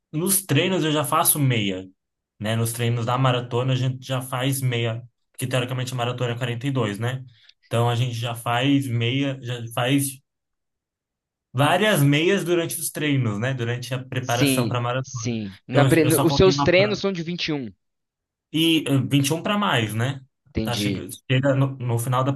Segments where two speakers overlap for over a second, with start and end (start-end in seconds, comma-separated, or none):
14.2-17.0